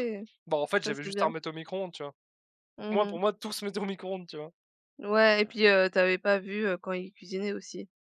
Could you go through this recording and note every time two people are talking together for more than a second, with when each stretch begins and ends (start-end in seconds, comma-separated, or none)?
none